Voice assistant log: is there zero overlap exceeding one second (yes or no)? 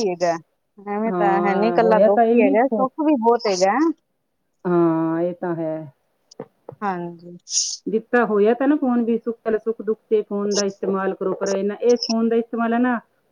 no